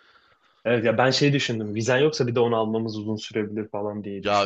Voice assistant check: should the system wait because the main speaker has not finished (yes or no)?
no